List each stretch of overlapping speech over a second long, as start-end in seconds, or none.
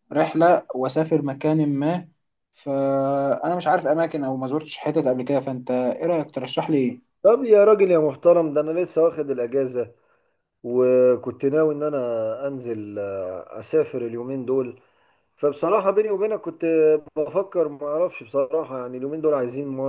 none